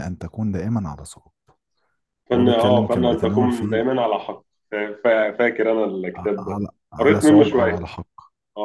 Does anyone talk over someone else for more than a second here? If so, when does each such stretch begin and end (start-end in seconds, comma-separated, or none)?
2.3-3.8, 6.2-7.9